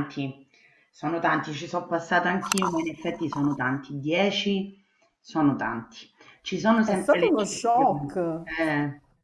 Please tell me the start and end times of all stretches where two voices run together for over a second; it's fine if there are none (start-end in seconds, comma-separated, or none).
6.8-8.4